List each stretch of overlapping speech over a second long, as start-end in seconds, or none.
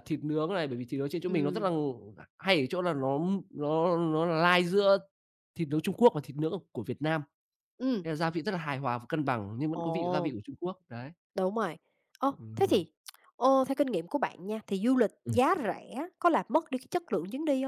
none